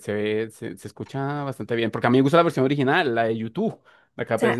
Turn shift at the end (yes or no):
yes